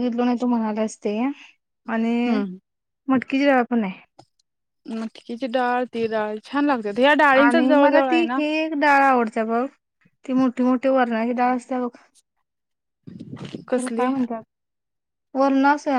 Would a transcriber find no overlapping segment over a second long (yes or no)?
yes